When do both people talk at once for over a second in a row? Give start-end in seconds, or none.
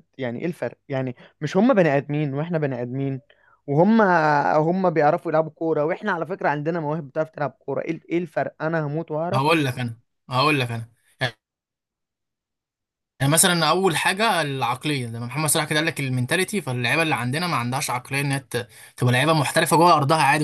none